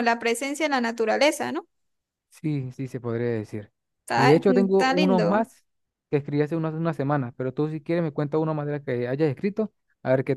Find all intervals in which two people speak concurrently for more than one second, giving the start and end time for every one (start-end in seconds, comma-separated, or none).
4.2-5.5